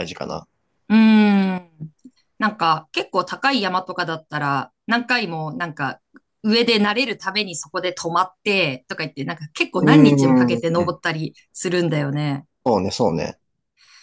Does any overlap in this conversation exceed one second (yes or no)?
yes